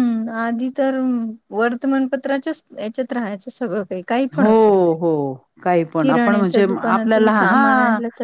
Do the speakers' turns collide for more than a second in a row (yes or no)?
yes